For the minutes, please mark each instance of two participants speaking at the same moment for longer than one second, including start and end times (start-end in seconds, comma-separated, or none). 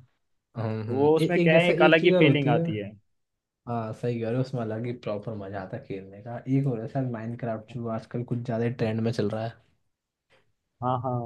0.7-2.6